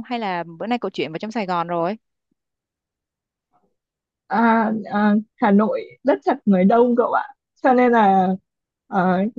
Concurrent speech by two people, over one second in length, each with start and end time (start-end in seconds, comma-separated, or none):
none